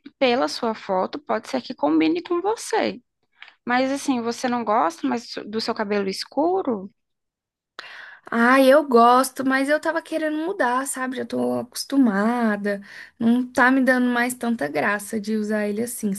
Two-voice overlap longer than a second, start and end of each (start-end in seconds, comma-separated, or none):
none